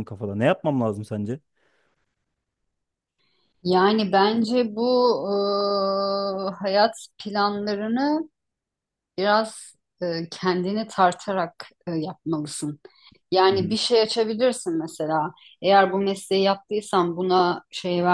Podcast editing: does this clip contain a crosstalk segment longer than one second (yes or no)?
no